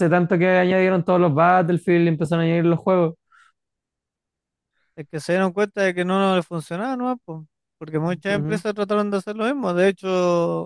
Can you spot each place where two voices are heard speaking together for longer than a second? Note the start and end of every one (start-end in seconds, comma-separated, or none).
none